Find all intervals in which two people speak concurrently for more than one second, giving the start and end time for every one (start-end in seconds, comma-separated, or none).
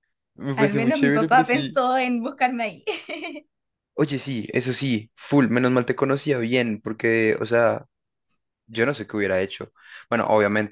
0.6-1.8